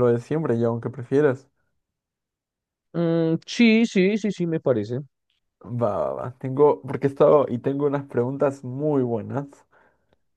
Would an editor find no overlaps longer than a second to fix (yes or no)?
yes